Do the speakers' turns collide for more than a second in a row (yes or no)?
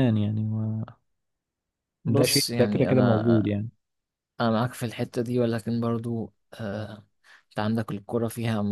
yes